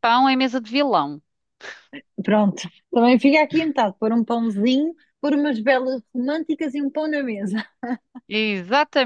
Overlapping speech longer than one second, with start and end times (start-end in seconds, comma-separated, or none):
none